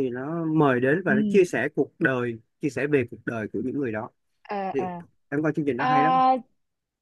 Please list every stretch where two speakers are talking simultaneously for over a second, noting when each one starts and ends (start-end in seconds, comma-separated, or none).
none